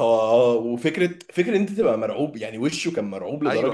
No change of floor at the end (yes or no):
no